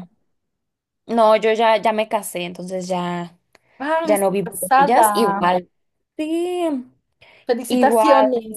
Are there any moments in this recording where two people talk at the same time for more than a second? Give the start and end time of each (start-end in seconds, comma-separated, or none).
4.0-5.5